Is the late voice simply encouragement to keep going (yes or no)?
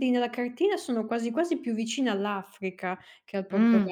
no